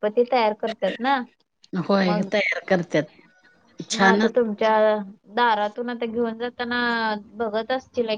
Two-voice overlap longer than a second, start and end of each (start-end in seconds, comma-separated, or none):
none